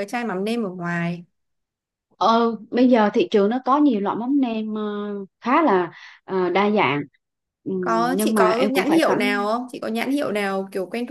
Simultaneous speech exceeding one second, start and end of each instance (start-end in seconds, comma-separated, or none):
7.8-9.5